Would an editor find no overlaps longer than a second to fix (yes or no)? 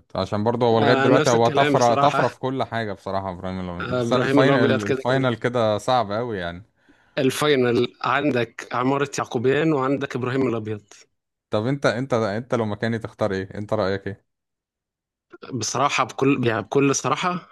no